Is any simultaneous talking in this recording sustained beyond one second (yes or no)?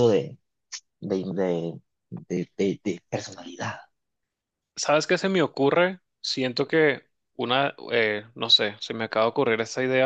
no